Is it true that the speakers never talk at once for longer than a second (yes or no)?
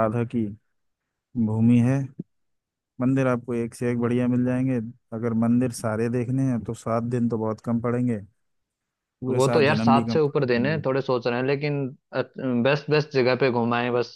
no